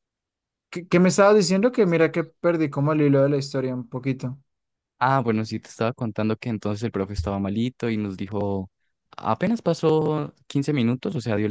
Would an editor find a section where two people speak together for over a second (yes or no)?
no